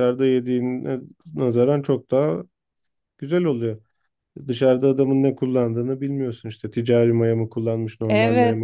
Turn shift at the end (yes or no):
yes